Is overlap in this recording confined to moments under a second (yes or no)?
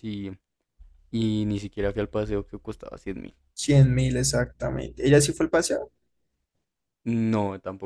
yes